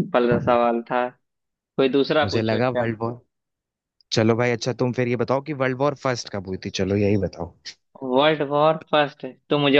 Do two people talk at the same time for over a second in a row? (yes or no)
no